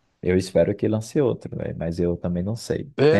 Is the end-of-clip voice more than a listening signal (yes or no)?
no